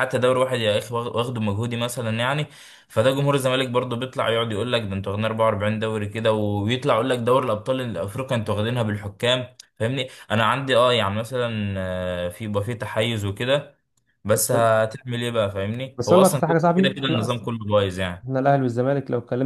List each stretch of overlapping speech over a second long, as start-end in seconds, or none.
16.0-17.5